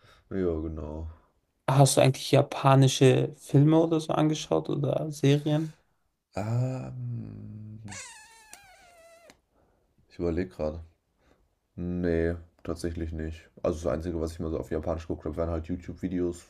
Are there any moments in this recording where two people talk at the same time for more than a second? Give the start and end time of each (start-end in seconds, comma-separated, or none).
none